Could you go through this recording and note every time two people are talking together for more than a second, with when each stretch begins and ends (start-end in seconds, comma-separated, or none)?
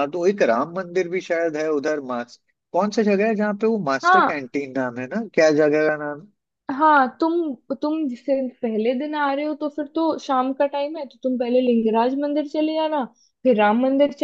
none